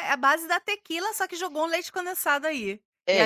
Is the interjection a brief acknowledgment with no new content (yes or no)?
no